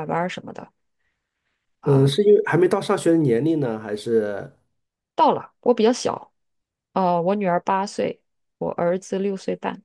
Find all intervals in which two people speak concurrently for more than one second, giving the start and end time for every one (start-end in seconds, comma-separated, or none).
none